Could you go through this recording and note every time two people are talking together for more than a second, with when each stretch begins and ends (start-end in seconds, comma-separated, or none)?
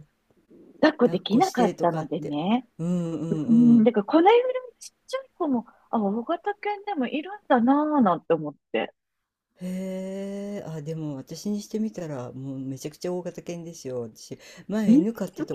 1.1-2.4